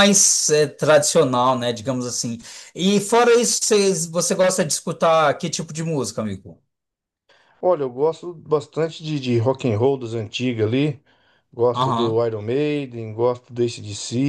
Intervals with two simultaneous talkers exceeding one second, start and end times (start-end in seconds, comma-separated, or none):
none